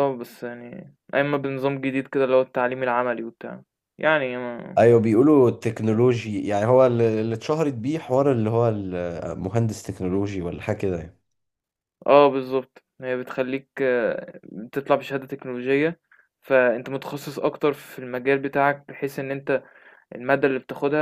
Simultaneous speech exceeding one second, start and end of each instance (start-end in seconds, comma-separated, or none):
none